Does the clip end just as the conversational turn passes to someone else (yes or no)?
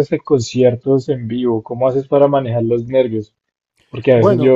no